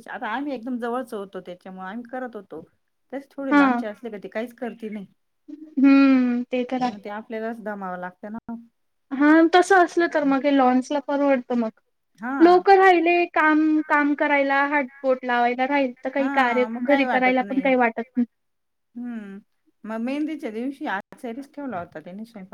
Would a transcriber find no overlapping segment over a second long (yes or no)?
no